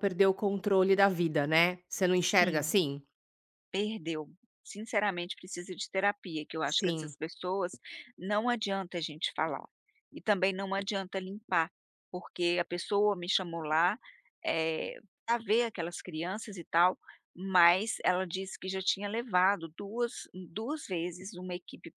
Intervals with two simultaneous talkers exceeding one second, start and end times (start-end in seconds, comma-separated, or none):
none